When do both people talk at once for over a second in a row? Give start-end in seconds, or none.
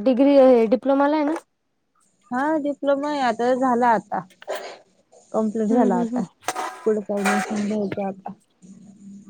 none